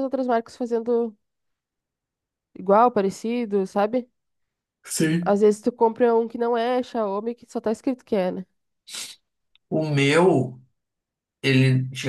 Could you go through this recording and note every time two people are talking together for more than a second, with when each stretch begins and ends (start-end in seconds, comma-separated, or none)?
none